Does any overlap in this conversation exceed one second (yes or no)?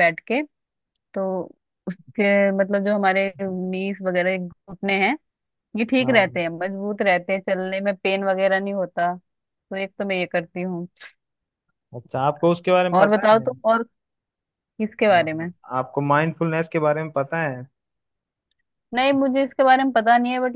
no